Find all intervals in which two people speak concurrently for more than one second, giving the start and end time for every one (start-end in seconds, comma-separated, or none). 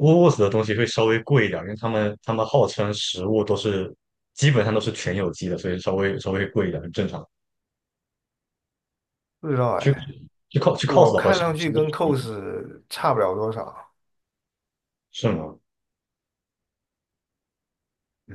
10.8-12.3